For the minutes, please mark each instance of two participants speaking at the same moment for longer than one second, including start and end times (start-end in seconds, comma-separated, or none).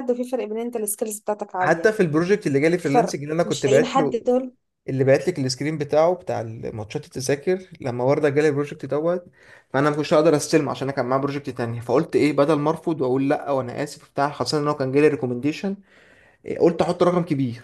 2.8-4.2